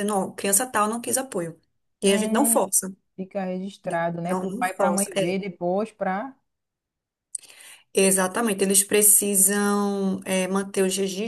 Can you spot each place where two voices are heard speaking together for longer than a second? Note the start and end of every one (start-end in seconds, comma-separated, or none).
3.8-5.4